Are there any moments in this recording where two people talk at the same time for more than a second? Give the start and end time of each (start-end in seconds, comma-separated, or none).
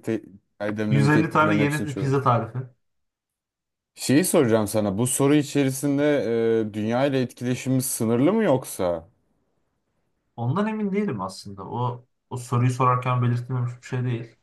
0.9-2.2